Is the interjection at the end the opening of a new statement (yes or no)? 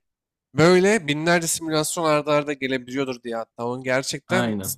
no